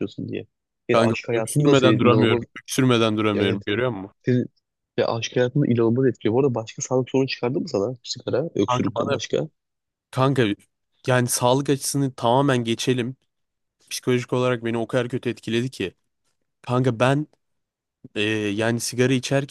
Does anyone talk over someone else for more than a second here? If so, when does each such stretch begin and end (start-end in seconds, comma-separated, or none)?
0.9-2.4